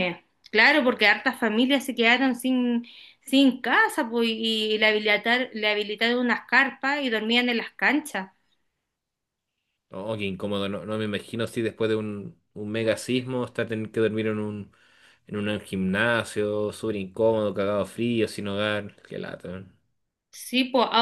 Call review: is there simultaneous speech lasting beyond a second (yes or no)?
no